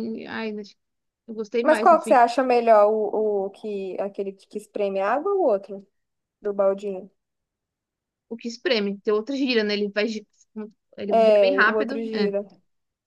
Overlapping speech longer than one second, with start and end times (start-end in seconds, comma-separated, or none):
11.1-12.3